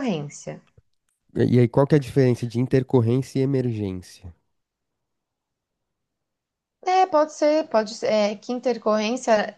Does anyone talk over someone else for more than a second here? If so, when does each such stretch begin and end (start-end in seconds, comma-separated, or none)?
none